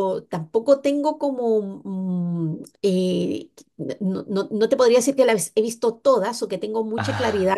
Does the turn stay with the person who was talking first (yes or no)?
yes